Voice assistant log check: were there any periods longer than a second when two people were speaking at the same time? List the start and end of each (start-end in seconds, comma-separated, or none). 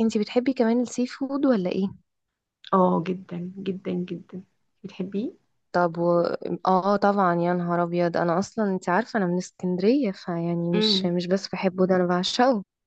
none